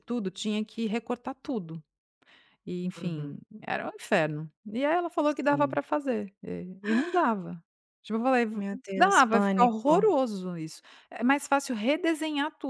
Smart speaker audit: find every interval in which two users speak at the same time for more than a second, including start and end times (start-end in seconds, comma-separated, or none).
8.5-10.0